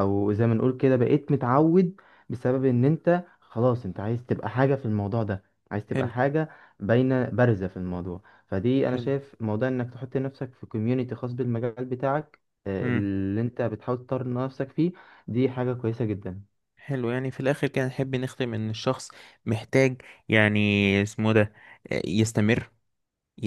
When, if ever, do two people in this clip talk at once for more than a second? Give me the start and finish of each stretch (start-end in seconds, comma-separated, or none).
none